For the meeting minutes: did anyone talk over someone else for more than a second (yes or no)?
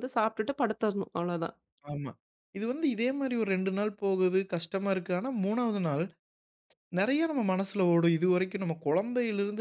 no